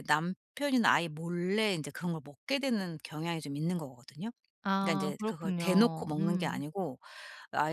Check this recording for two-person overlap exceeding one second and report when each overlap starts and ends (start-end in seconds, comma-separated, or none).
4.8-6.6